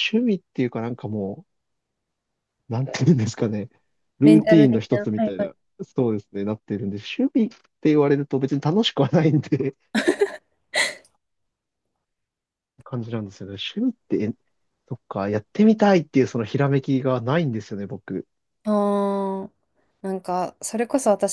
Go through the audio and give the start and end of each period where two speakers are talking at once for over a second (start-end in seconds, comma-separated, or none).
4.2-5.5